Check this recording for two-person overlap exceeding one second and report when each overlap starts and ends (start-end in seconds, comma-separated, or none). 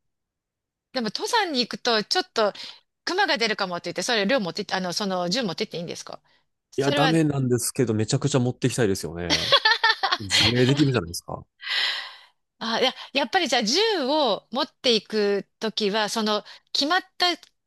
none